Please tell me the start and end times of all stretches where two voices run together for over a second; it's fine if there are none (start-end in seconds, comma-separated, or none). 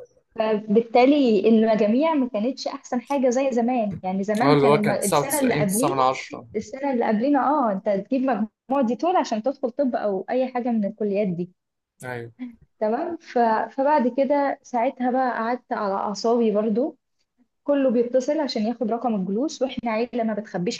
4.4-6.0